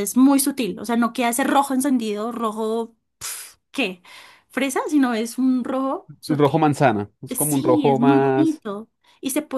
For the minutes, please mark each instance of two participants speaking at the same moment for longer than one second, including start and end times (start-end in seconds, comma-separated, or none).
7.3-8.6